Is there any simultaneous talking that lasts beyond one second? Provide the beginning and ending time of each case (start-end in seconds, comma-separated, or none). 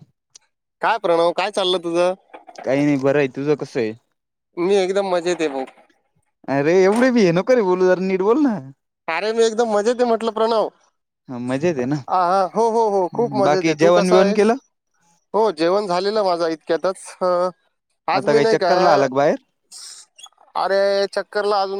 13.0-14.4